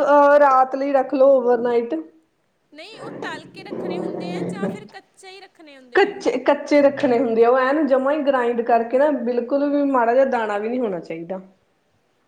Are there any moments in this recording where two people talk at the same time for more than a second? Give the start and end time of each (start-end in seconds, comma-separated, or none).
none